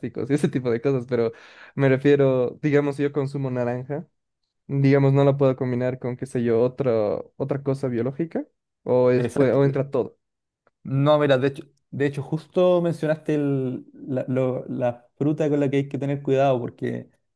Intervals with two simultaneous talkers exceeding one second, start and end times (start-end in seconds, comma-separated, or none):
none